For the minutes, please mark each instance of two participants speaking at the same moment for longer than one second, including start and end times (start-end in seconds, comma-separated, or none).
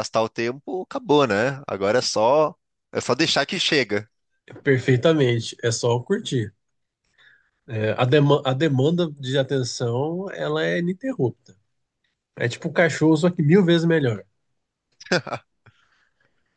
none